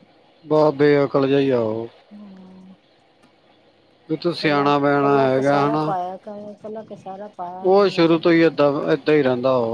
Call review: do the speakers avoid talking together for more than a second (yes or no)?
no